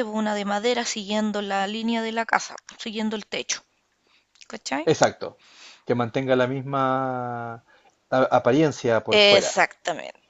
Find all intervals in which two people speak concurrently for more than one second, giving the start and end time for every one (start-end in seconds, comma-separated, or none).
none